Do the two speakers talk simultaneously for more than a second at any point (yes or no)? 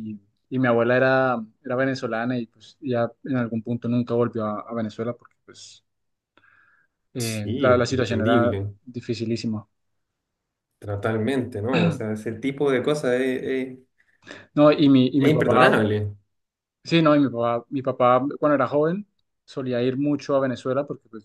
yes